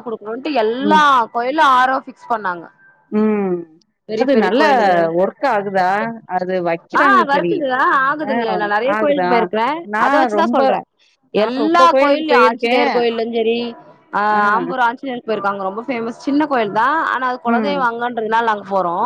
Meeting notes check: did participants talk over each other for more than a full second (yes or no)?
yes